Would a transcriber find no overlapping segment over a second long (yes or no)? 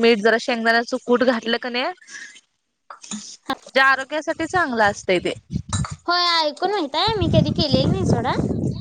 yes